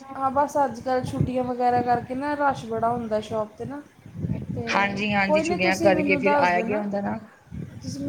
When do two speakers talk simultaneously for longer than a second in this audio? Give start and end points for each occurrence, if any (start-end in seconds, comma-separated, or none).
4.7-6.8